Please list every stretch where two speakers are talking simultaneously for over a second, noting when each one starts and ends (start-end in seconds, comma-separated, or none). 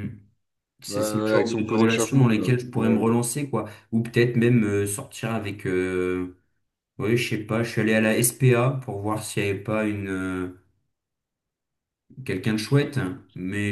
0.9-3.1